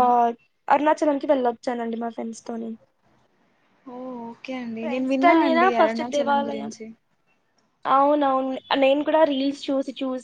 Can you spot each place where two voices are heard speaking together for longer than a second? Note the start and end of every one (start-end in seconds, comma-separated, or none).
4.8-6.7